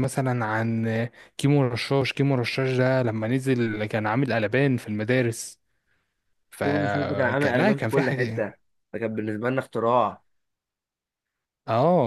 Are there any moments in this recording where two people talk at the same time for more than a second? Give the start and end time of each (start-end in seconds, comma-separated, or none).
6.6-8.5